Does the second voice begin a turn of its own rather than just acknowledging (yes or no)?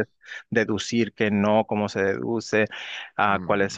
no